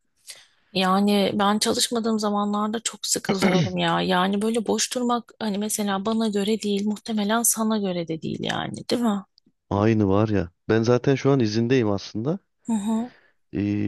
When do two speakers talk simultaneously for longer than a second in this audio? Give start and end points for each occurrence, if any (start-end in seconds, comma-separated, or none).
none